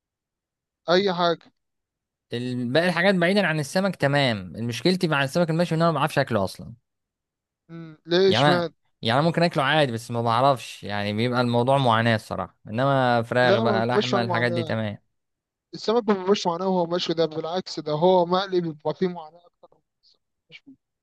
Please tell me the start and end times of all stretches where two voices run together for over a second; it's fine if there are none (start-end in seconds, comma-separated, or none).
13.4-14.8